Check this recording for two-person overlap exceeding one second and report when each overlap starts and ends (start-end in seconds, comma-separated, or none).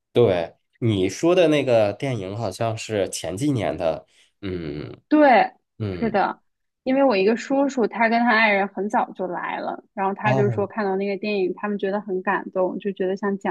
none